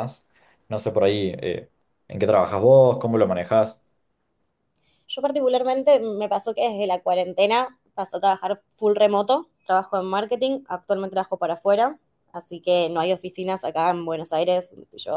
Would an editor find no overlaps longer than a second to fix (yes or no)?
yes